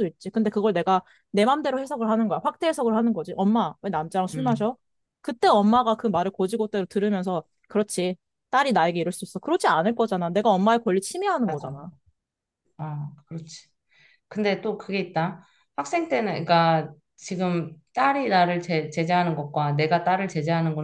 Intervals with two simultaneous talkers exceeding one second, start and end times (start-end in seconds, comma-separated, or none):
none